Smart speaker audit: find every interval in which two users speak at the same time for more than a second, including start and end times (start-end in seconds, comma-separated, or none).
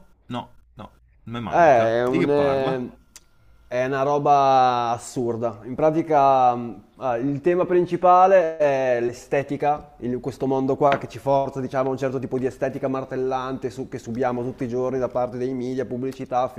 1.5-2.8